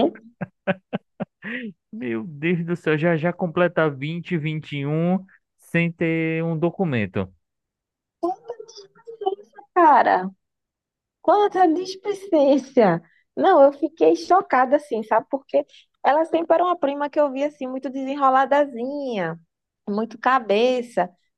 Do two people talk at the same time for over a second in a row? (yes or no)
no